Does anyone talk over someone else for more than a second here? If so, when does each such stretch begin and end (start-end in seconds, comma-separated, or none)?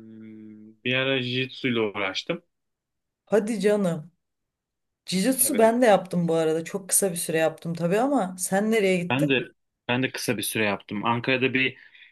none